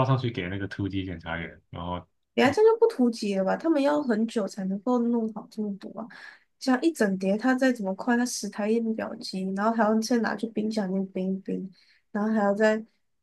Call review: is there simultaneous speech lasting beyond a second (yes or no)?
no